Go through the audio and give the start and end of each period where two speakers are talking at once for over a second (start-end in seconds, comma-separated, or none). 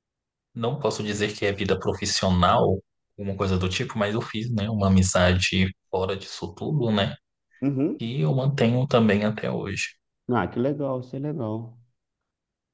none